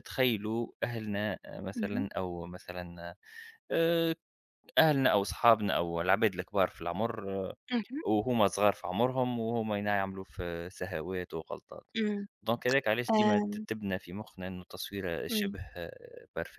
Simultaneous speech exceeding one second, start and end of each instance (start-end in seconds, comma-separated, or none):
none